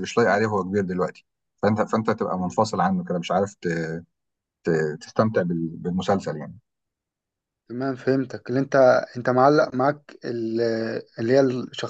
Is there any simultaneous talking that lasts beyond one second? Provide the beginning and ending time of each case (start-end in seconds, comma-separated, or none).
none